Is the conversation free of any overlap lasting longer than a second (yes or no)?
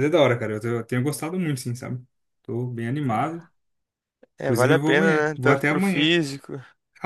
no